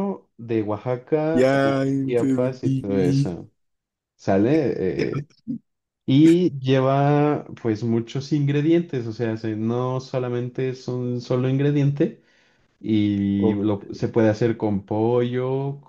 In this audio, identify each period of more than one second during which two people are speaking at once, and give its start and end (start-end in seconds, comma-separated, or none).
1.3-3.4